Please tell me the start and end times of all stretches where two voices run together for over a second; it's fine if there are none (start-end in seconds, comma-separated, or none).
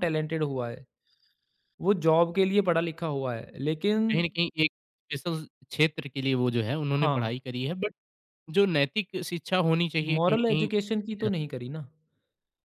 10.0-11.4